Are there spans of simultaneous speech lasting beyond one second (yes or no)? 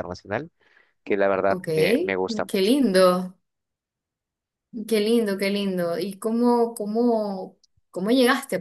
no